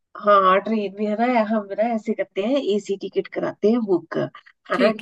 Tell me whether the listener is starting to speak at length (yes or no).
no